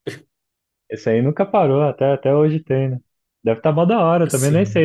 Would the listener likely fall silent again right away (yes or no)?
yes